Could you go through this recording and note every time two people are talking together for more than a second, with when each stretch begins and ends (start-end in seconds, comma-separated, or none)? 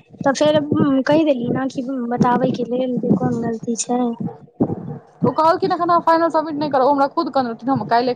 none